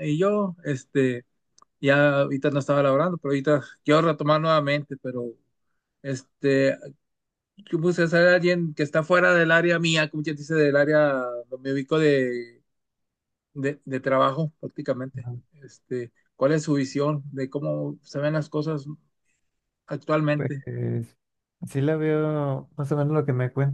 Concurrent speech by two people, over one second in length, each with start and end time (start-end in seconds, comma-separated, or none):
none